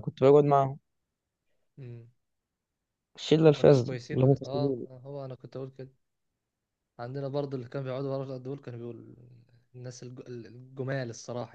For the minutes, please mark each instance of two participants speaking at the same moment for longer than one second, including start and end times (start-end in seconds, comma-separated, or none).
3.4-4.9